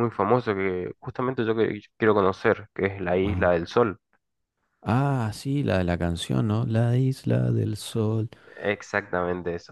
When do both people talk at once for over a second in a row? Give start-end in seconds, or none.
none